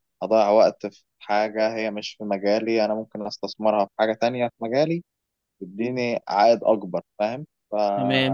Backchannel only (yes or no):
no